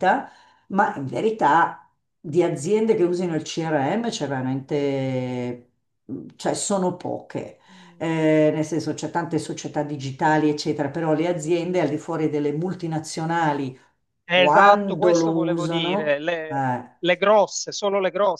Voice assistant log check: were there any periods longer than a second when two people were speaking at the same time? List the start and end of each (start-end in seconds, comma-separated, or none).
14.3-17.0